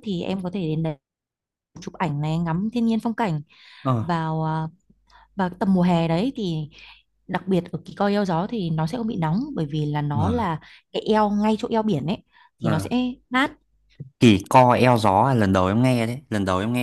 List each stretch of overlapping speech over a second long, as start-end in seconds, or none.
none